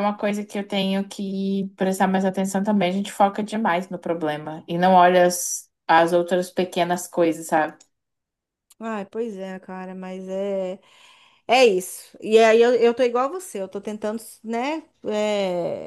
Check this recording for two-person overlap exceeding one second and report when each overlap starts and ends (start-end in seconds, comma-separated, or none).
none